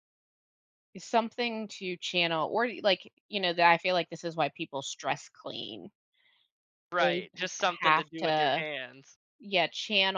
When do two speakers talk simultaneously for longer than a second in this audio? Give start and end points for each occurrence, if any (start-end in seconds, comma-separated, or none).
7.0-8.7